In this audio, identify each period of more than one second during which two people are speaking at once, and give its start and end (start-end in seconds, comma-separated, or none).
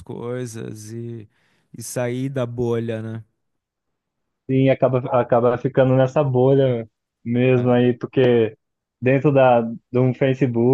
none